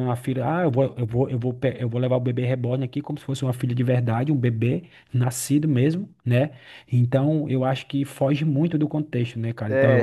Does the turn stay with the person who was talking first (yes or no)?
no